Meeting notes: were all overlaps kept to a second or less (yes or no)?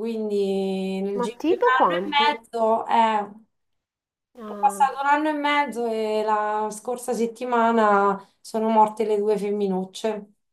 no